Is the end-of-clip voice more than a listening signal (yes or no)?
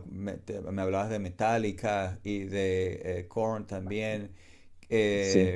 yes